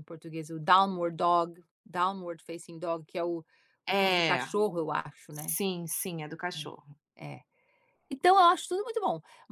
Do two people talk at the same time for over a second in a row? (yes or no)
no